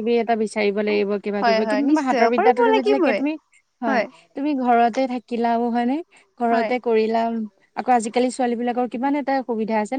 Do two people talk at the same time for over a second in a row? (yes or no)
yes